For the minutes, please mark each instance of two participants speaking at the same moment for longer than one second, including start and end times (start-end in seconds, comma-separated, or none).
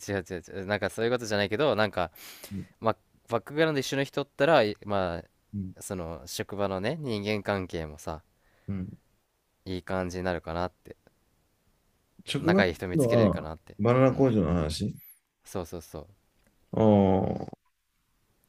12.4-14.3